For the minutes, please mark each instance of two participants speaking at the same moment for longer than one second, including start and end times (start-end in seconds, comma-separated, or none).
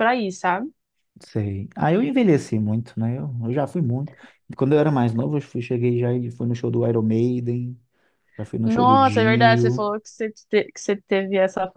8.6-9.9